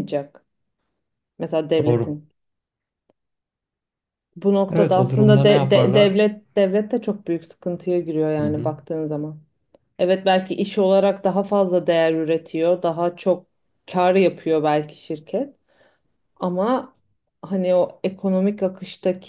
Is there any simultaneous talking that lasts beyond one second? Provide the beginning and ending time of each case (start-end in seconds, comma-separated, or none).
4.7-6.2